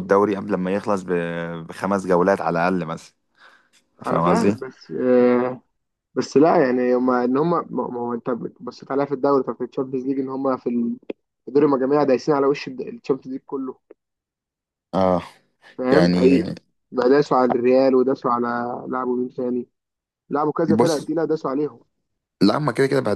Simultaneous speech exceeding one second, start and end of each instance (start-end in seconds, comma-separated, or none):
none